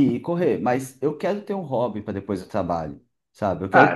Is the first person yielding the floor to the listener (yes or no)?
yes